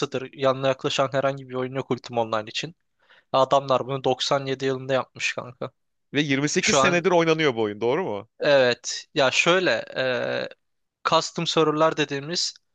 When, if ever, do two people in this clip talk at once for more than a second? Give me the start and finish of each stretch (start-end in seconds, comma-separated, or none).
none